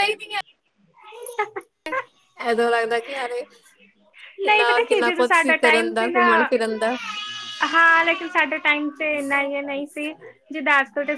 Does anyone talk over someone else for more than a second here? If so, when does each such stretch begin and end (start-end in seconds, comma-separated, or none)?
4.5-6.2